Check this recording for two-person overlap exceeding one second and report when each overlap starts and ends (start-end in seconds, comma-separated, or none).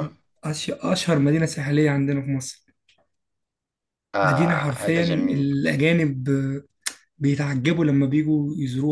4.2-5.5